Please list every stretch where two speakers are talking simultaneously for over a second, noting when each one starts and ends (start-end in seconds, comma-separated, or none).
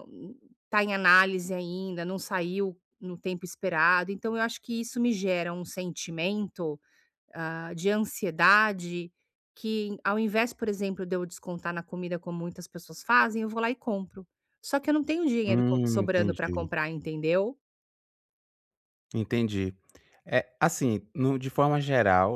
15.5-16.7